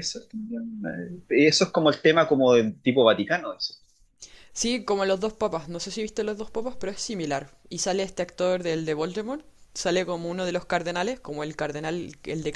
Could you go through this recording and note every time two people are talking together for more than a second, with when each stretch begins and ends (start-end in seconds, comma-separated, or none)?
none